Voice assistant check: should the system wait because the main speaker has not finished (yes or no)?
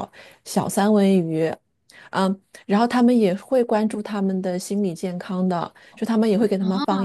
yes